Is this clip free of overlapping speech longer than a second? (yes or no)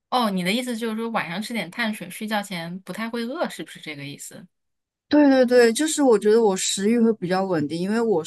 yes